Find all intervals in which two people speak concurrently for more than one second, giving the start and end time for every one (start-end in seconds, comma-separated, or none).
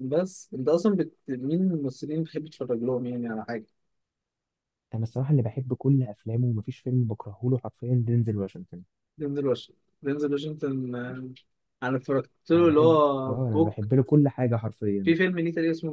12.5-13.9